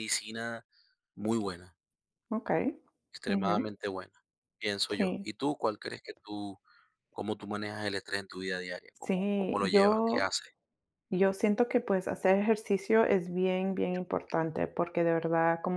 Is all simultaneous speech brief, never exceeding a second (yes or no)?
no